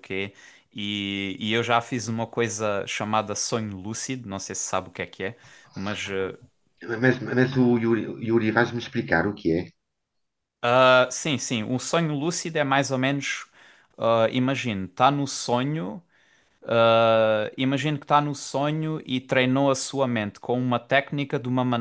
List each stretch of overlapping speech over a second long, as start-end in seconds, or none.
none